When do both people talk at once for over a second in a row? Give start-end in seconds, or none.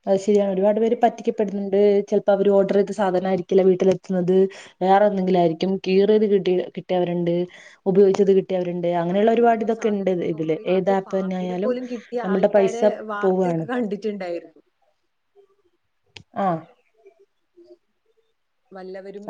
9.2-11.6